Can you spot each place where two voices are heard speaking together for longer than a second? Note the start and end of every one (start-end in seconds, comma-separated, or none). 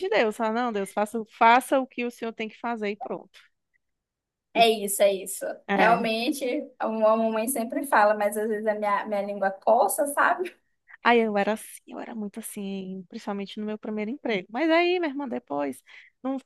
none